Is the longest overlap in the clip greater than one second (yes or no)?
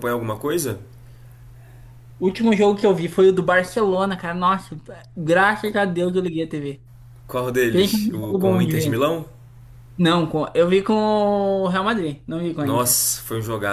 yes